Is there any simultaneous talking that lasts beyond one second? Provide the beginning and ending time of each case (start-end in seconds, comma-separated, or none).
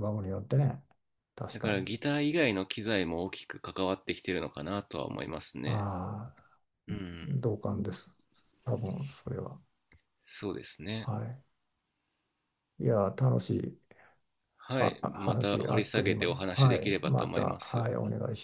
14.8-17.9